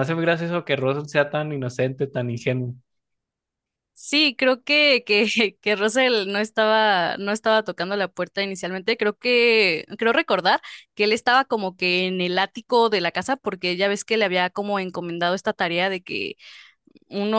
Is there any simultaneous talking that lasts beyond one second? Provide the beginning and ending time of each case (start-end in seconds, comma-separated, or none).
none